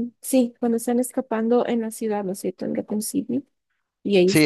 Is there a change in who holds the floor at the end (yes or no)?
yes